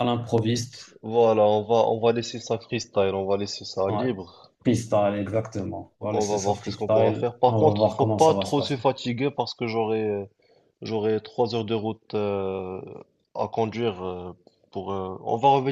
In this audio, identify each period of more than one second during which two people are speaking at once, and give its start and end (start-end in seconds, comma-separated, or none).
6.1-8.8